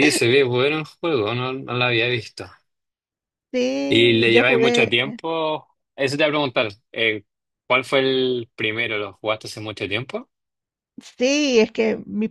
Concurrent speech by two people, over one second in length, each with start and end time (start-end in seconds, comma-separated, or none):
3.9-5.2